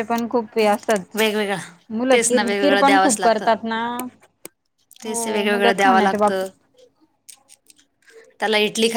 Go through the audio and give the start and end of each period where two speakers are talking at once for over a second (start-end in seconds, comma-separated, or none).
2.1-3.5, 5.0-6.5